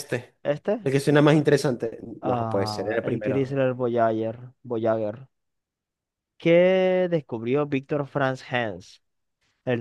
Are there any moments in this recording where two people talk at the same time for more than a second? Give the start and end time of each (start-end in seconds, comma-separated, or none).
2.2-3.6